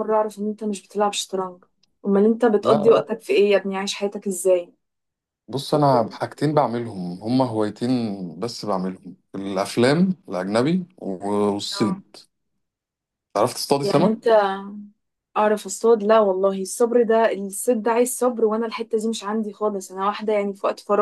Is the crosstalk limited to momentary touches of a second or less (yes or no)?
yes